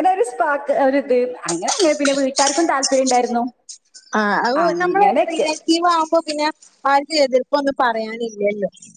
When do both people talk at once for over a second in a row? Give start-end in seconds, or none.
none